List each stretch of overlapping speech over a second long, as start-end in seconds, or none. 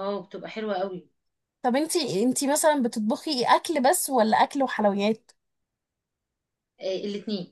none